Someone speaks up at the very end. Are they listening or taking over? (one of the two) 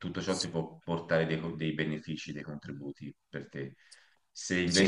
taking over